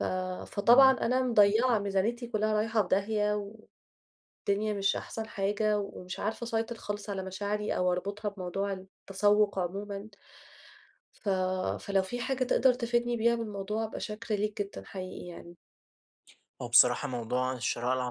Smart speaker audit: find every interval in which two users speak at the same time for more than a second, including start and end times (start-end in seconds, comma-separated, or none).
none